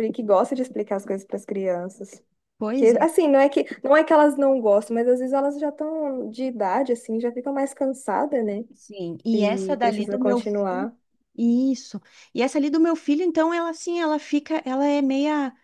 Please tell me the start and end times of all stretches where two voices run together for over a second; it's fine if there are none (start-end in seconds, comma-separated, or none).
9.3-10.9